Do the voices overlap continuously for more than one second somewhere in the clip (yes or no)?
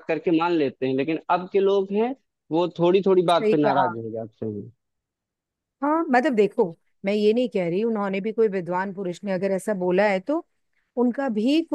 no